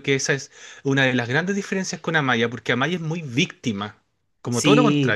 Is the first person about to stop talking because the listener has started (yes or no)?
yes